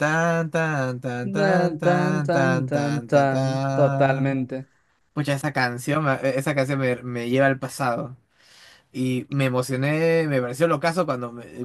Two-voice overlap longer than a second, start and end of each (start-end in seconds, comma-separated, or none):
1.3-4.4